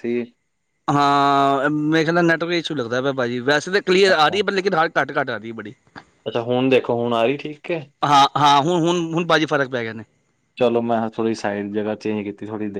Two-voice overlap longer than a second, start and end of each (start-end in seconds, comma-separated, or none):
none